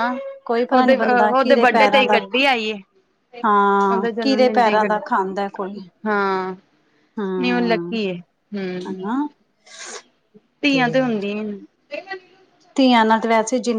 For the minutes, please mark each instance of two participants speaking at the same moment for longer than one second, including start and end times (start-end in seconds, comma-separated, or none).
3.9-5.8